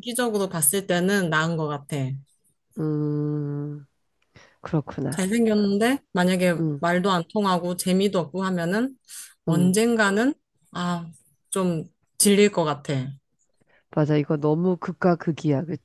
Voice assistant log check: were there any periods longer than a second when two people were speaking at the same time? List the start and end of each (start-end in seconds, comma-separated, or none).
none